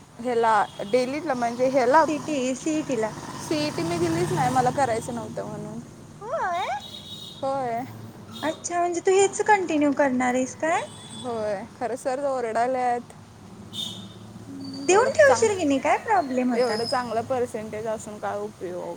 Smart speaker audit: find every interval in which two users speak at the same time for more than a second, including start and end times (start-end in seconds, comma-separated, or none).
none